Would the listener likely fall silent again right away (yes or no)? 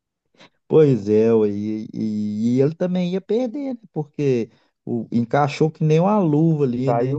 no